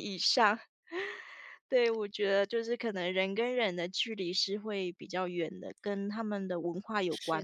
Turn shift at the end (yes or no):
yes